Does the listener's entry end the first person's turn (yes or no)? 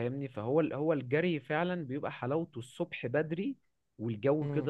no